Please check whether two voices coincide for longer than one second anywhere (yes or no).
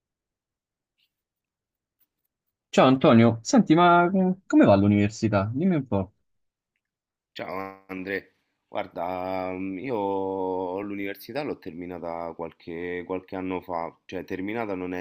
no